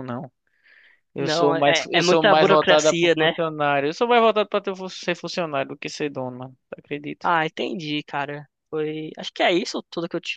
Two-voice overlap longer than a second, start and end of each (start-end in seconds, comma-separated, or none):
1.2-3.3